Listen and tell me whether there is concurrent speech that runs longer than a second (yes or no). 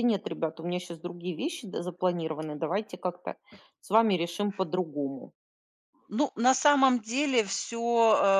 no